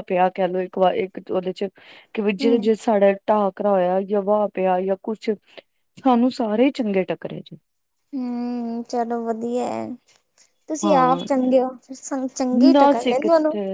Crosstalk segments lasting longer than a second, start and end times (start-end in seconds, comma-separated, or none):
none